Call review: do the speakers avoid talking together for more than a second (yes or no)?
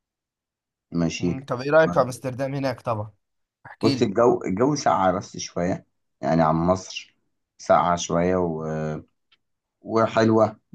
yes